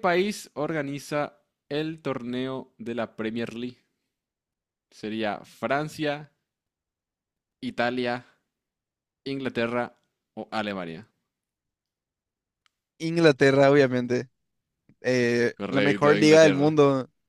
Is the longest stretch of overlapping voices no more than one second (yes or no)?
no